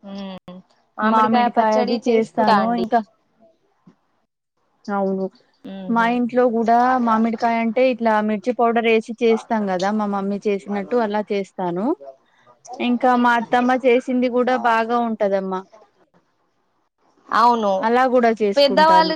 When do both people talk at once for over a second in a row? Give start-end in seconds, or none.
1.1-2.6